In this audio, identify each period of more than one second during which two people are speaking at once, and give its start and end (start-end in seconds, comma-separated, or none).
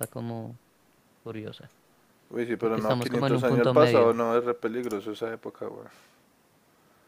2.6-4.1